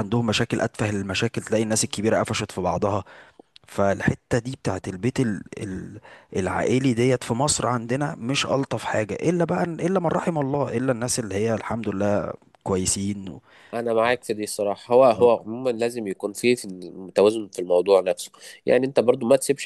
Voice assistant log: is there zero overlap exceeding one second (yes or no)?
yes